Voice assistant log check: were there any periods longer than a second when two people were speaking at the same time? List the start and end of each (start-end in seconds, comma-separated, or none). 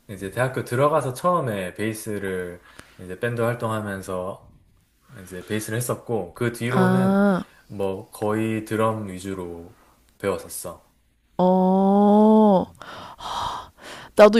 none